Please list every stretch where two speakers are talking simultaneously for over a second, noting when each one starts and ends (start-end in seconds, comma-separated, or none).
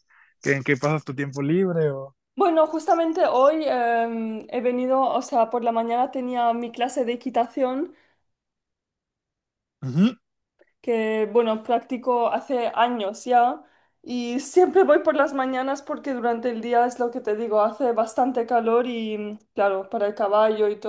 none